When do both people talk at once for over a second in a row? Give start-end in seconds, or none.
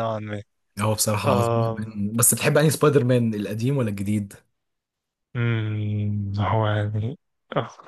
none